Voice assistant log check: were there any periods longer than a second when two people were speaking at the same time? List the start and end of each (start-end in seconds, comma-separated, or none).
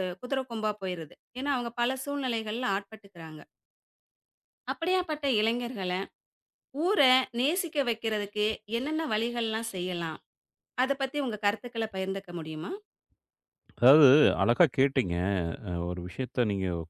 none